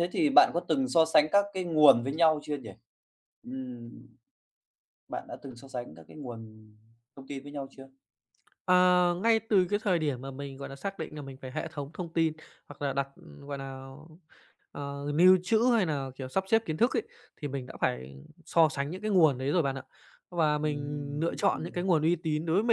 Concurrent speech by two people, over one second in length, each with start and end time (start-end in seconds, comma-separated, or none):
20.6-21.8